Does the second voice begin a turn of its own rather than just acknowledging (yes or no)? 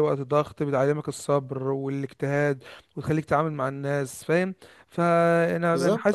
no